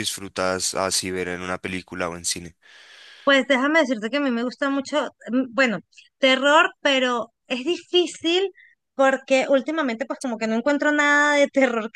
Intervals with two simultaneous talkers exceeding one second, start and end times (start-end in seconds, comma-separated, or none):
none